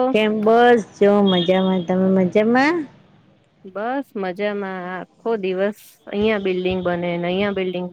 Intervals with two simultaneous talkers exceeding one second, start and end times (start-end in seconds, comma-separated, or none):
none